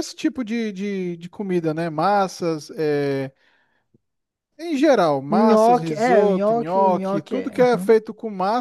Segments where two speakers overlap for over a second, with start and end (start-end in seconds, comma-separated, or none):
5.3-7.9